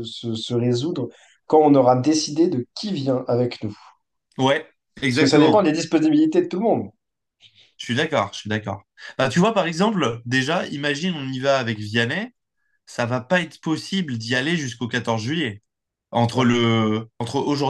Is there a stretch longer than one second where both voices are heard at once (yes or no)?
no